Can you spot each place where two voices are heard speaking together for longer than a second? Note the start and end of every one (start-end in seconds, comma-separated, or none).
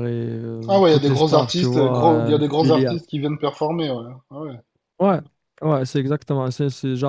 0.7-2.9